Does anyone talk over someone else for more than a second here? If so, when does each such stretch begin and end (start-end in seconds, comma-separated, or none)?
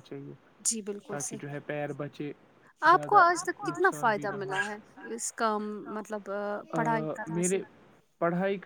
none